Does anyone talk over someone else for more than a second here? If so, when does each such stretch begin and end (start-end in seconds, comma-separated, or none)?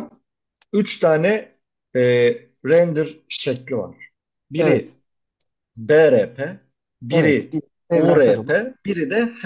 7.1-8.6